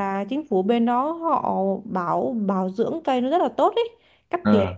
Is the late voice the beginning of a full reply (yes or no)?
no